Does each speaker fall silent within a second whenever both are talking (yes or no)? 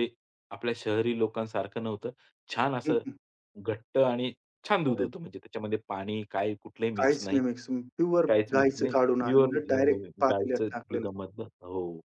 no